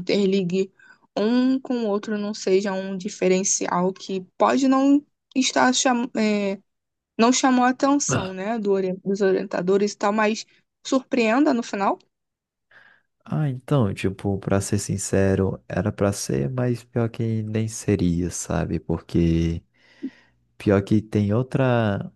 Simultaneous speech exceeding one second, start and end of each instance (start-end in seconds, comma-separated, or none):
none